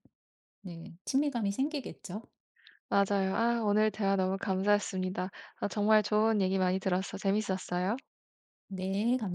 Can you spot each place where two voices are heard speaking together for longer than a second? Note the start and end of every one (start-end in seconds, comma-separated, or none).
none